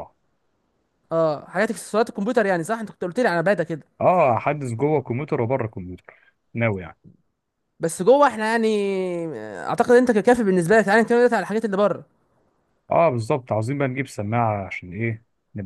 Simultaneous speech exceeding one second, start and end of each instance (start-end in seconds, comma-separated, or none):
none